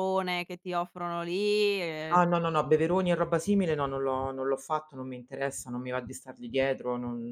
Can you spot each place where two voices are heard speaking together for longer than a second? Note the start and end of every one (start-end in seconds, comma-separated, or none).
none